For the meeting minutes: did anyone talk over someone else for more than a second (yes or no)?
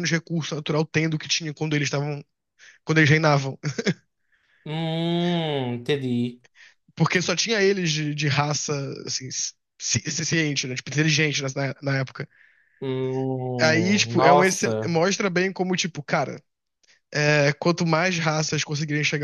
yes